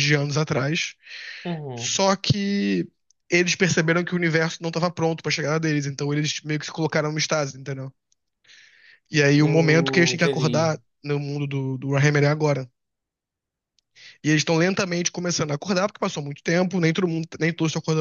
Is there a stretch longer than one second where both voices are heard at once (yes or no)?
yes